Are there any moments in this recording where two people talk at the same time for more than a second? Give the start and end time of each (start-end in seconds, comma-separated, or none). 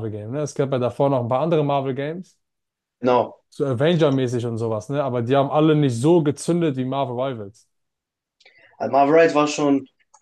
none